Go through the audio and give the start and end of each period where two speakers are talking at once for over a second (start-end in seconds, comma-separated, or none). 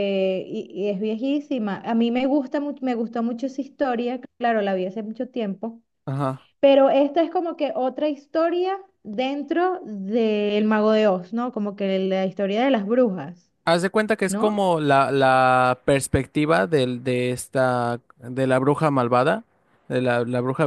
none